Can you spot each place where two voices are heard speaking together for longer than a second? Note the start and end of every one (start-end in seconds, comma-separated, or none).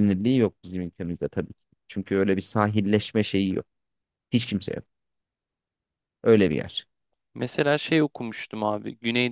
none